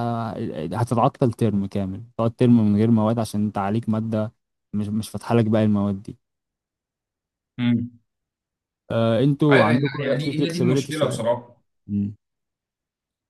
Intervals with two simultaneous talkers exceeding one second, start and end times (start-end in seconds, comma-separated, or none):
9.5-11.3